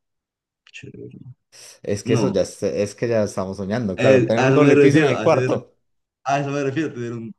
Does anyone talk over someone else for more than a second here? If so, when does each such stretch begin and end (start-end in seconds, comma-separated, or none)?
4.0-5.5